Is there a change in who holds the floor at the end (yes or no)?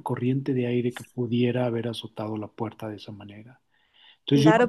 yes